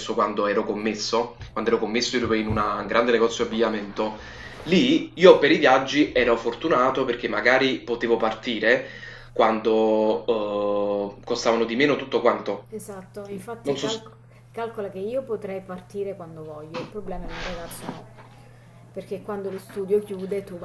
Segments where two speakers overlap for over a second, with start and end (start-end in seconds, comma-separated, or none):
none